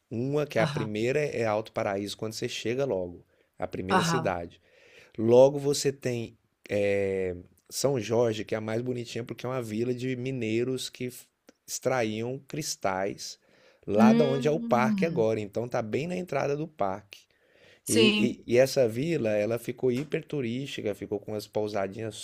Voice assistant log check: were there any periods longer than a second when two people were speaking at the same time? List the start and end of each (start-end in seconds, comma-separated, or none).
14.0-15.3